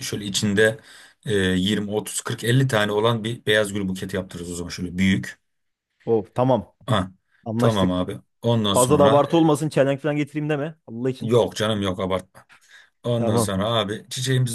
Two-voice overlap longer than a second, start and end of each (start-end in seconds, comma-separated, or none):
none